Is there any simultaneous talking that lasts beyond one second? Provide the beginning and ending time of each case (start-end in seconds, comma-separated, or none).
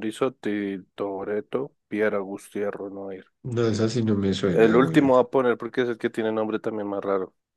none